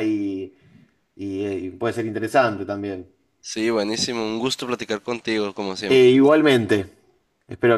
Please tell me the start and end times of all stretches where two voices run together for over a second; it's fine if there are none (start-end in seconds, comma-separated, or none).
none